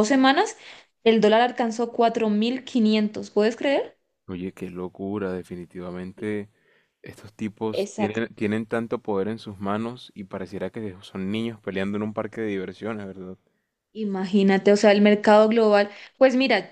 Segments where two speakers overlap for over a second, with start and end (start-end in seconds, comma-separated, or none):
none